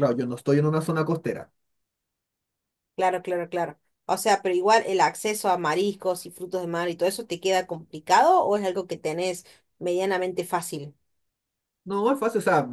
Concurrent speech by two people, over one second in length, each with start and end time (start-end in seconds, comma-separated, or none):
none